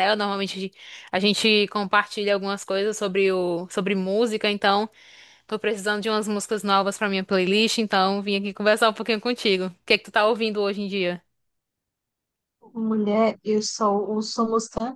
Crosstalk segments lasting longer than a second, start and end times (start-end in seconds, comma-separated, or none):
none